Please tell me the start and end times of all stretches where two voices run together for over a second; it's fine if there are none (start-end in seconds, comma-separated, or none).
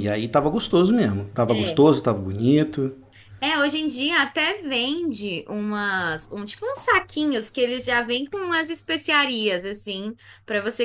none